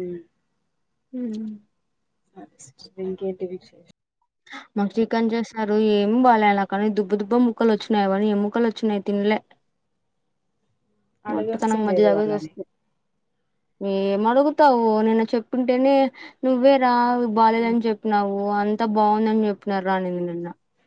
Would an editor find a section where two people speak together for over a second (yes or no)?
yes